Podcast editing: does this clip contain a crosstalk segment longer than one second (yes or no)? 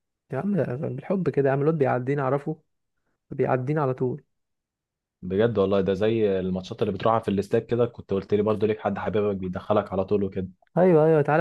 no